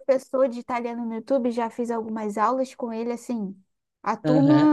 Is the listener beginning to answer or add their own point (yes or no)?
no